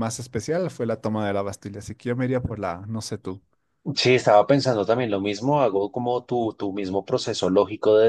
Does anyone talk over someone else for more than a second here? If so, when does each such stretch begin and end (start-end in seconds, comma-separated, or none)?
none